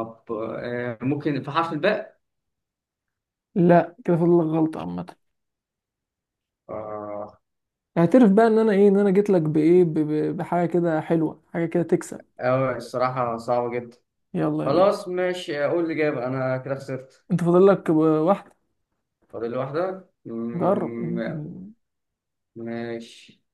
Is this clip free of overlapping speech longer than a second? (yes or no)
yes